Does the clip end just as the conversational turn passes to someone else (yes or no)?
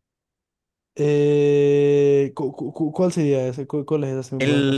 yes